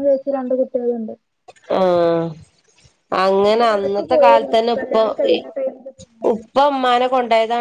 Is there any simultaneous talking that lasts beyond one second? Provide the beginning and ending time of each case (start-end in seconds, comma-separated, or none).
3.4-5.1